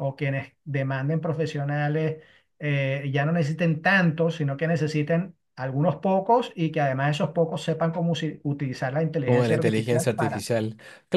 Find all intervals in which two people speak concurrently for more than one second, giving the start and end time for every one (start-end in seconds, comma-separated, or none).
9.2-10.4